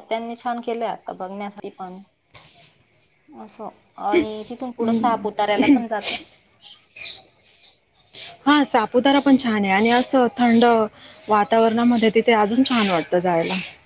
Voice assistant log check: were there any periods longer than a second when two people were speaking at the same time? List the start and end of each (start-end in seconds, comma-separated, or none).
none